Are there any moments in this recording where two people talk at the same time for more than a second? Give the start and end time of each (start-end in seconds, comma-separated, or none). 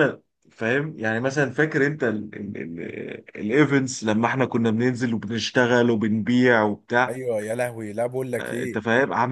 none